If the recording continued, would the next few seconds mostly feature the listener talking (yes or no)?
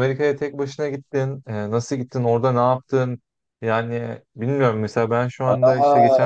yes